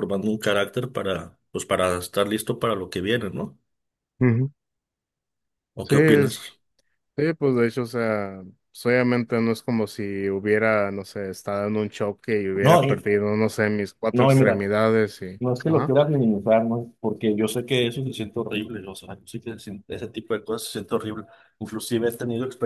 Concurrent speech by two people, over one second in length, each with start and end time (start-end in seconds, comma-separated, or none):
none